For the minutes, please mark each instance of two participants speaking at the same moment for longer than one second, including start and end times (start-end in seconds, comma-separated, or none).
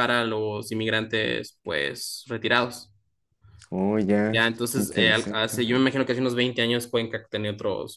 4.3-5.7